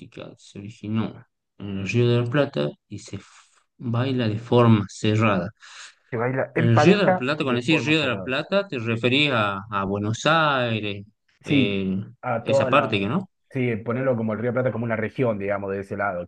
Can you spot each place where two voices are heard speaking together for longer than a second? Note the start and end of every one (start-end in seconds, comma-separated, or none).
6.5-8.3